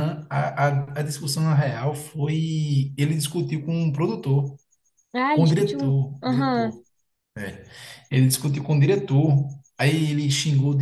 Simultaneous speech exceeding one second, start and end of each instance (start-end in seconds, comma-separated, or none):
5.3-6.8